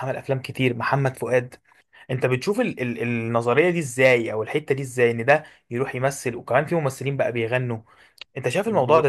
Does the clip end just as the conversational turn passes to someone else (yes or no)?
yes